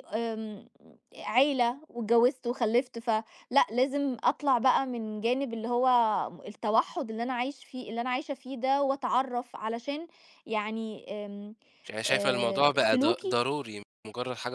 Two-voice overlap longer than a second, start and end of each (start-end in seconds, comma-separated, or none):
12.1-13.4